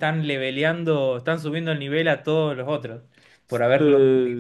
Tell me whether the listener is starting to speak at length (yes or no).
yes